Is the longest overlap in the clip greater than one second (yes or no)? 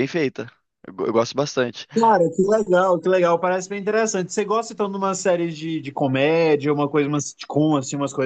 no